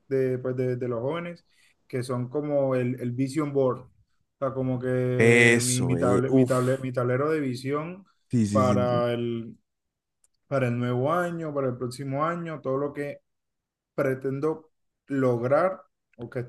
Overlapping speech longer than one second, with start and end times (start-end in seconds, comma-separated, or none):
5.2-6.8